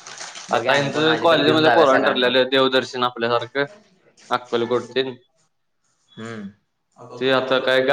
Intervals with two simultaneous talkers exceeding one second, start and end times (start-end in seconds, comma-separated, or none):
0.6-2.3